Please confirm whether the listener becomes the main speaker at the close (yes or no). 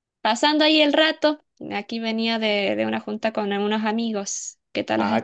yes